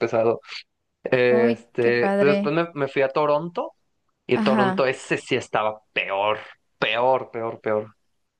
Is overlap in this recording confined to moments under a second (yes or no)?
no